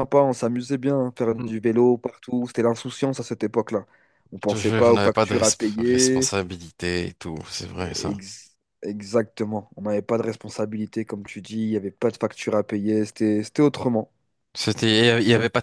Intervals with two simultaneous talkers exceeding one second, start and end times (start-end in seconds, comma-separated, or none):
4.4-6.3